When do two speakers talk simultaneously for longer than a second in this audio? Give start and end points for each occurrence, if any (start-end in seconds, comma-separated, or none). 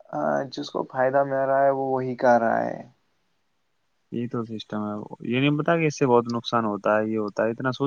none